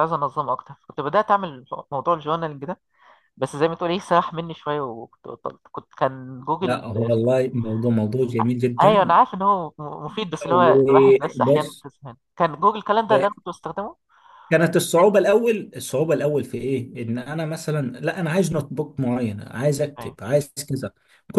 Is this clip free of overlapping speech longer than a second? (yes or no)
no